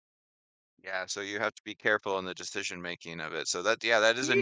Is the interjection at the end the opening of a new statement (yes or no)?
no